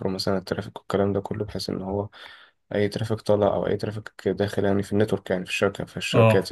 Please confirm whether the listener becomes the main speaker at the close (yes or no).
no